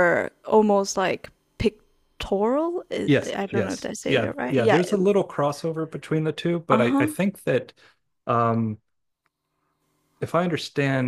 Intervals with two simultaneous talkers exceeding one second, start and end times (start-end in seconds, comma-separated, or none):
3.0-4.8